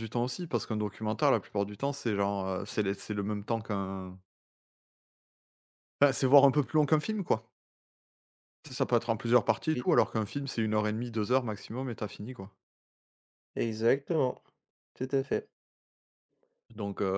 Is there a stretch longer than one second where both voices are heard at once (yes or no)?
no